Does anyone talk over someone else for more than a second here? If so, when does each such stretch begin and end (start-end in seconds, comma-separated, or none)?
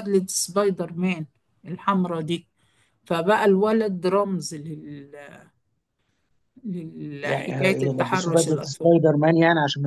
7.2-8.9